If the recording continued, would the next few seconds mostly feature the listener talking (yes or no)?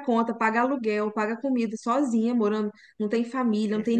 no